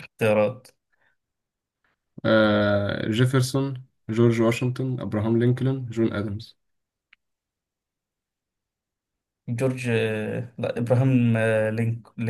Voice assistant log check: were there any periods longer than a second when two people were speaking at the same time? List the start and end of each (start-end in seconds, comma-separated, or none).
none